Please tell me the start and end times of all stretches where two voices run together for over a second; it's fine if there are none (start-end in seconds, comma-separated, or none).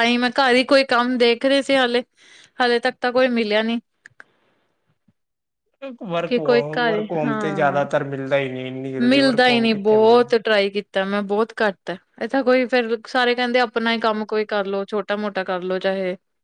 6.3-7.8